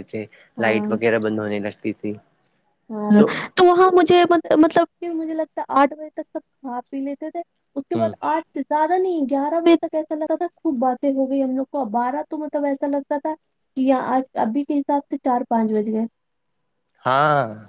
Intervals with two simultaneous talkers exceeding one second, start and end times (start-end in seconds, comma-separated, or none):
none